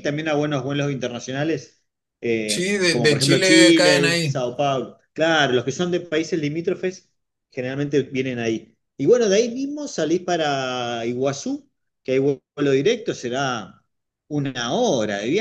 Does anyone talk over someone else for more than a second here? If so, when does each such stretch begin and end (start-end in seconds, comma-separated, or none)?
2.5-4.4